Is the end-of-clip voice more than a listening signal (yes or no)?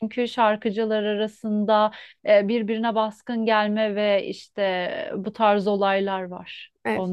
yes